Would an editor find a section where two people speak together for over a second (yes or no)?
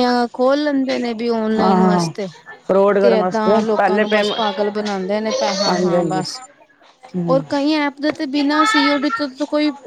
yes